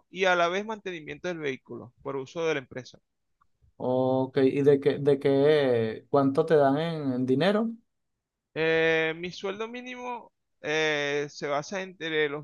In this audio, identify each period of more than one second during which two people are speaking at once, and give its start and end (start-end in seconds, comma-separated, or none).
none